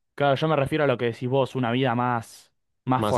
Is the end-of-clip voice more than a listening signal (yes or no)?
no